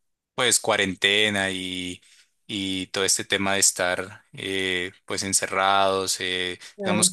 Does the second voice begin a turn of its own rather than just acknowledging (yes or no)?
no